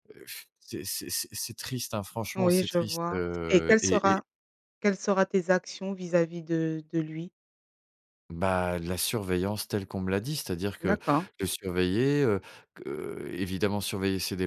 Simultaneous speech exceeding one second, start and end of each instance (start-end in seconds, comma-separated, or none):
2.4-4.2